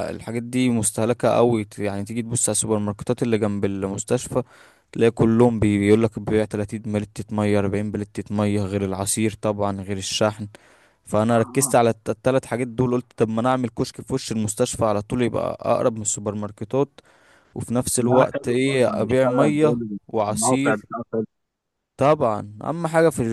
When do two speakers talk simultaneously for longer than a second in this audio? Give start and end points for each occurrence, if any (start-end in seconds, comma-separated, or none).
18.1-20.9